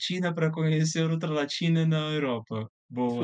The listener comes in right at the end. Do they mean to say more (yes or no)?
yes